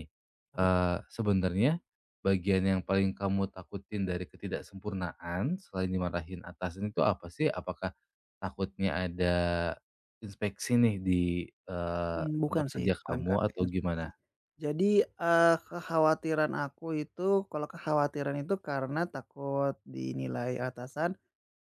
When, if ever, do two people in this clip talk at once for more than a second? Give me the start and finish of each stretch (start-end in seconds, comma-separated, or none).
12.1-14.1